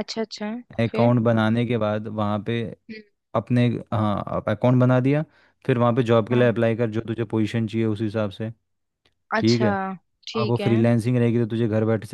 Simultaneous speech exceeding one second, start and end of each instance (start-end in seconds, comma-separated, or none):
none